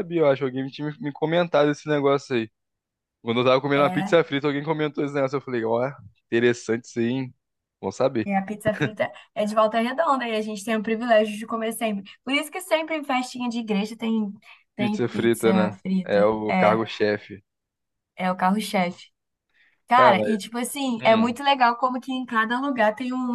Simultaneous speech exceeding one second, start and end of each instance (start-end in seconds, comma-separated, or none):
14.8-16.8